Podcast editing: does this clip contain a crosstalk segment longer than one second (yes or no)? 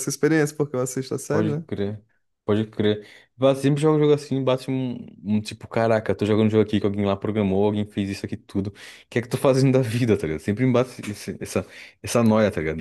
no